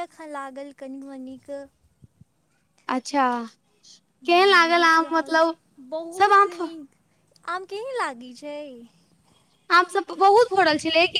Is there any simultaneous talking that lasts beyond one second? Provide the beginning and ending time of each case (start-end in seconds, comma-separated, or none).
4.2-5.5